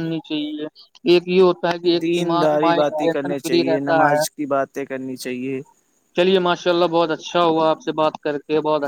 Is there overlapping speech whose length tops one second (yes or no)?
yes